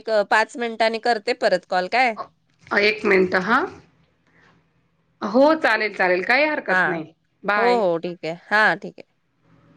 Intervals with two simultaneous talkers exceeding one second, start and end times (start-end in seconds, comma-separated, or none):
none